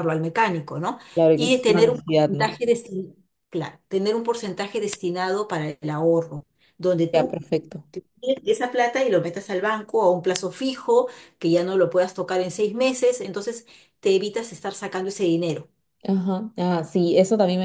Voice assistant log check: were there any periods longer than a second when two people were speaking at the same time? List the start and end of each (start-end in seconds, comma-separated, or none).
1.1-2.5